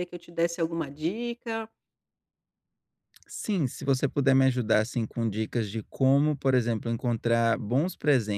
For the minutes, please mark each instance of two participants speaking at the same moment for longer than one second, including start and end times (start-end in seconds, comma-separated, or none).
none